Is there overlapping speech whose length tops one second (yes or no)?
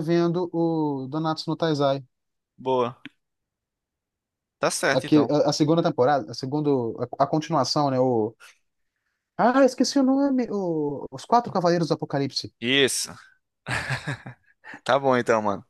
no